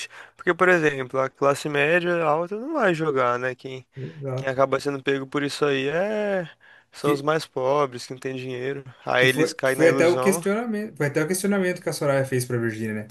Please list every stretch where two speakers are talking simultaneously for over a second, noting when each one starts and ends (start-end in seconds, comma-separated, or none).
9.2-10.4